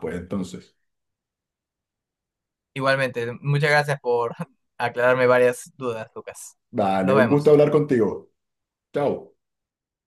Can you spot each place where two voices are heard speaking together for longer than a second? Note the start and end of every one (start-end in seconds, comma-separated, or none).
none